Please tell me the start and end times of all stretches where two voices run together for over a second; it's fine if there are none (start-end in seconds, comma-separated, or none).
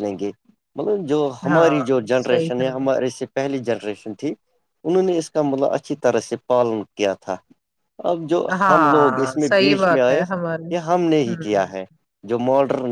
1.5-2.9, 8.6-10.2